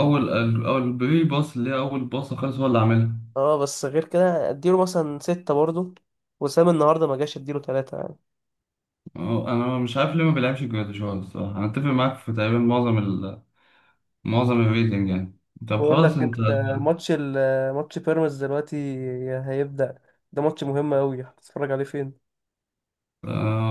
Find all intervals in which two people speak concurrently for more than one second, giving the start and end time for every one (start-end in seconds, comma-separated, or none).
none